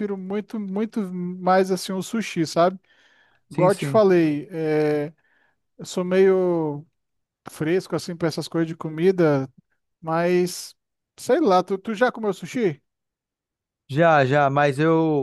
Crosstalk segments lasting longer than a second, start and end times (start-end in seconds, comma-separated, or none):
none